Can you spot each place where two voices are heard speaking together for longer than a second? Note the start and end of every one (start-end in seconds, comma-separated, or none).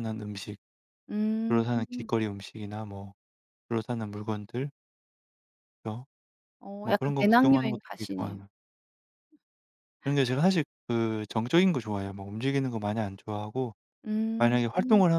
6.8-8.4